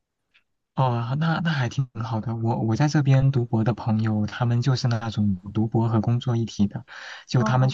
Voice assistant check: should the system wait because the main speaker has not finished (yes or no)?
yes